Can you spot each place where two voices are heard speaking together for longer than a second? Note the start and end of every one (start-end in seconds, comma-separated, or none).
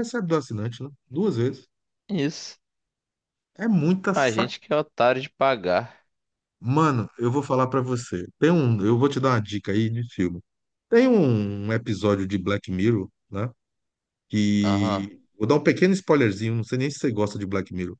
none